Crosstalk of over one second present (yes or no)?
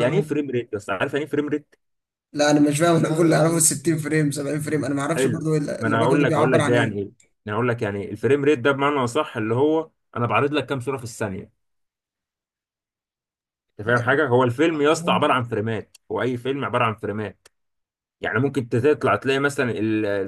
yes